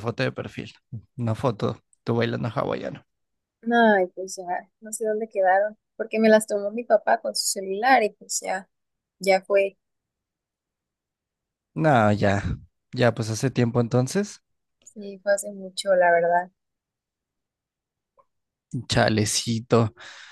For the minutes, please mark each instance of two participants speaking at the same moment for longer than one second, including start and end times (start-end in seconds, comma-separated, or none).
none